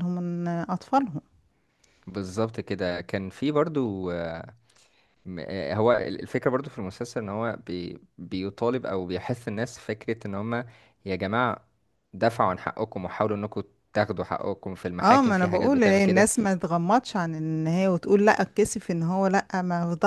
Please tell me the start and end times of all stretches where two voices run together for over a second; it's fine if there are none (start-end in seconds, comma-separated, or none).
15.0-16.3